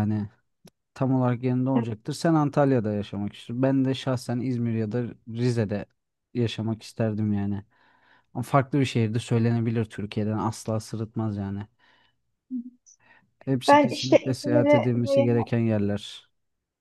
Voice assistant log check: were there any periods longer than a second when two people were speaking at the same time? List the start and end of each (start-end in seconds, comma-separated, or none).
13.7-15.3